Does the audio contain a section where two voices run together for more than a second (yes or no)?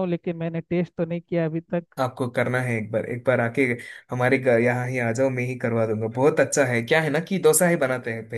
no